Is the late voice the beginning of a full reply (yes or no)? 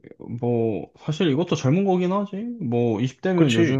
no